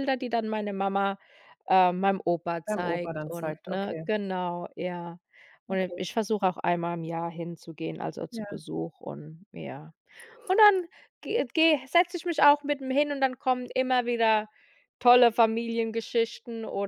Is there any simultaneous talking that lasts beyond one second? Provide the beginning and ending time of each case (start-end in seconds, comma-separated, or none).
2.6-4.1